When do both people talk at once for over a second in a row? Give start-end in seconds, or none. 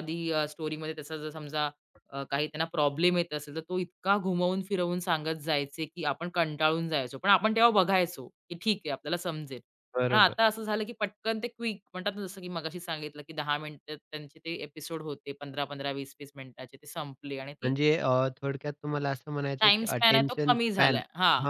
19.6-21.0